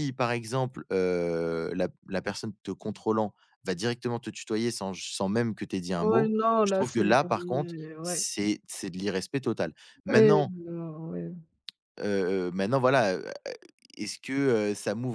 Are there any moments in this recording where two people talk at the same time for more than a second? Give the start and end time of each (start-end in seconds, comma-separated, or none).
6.0-8.3